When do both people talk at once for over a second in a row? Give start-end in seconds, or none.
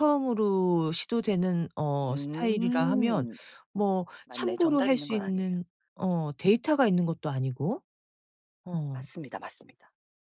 2.0-3.3, 4.2-5.5